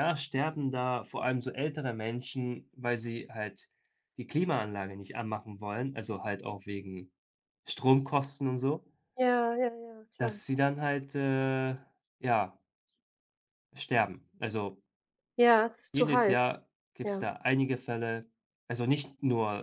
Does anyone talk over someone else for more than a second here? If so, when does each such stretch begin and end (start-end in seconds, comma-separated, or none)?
none